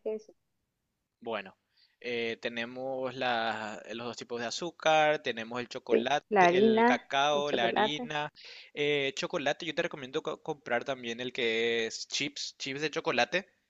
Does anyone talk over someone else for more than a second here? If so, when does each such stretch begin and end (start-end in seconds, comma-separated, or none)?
5.9-8.1